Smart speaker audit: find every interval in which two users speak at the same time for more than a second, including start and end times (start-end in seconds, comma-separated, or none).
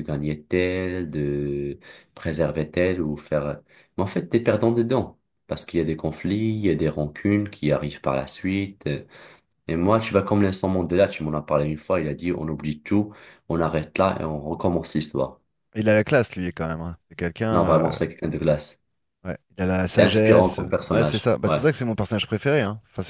19.9-21.6